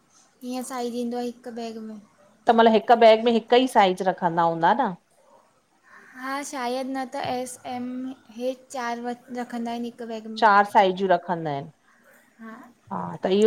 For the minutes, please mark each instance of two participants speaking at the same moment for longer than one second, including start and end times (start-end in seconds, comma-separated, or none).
none